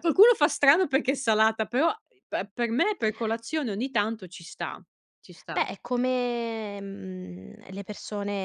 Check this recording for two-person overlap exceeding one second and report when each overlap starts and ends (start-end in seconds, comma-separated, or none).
none